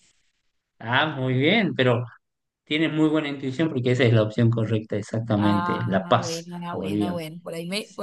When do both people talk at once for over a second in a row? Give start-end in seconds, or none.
5.4-7.2